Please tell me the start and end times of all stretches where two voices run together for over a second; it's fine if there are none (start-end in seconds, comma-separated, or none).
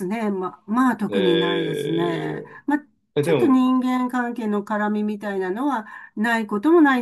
1.1-2.4